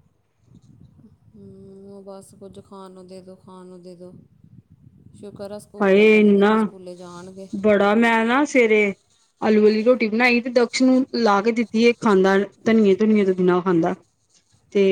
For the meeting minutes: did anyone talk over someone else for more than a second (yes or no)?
no